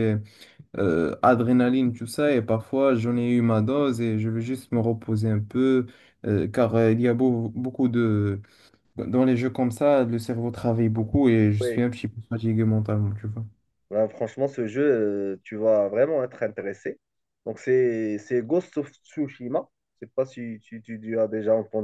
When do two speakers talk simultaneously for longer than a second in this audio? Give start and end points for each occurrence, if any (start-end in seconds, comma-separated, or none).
none